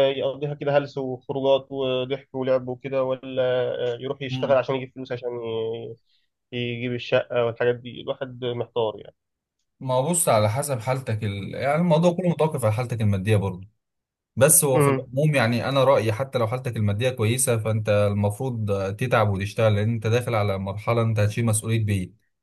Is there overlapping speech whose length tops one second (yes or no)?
no